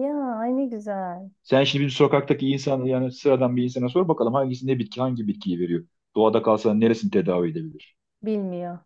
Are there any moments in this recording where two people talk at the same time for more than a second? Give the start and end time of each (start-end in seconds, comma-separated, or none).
none